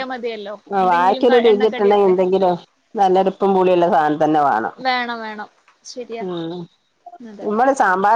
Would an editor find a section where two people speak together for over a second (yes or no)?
yes